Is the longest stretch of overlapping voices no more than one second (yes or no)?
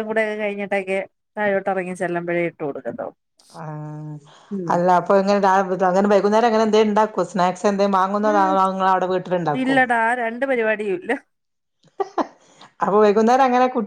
yes